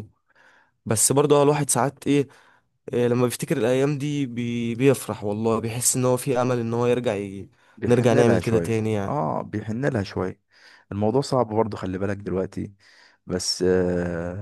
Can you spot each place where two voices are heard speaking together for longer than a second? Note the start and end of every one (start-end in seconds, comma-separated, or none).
7.9-9.2